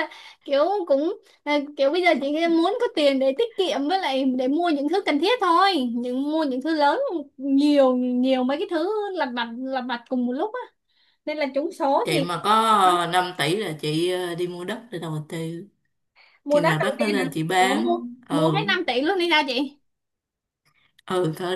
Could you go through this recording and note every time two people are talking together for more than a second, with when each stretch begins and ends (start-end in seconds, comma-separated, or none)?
16.5-18.6